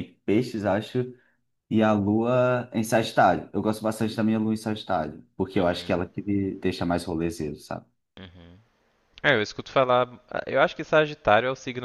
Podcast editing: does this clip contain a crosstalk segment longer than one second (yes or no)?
no